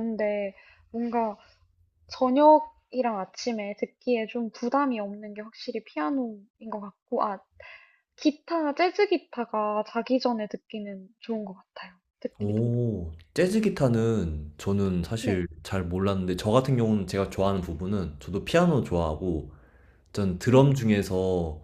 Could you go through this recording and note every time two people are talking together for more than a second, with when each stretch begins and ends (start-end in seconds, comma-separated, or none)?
none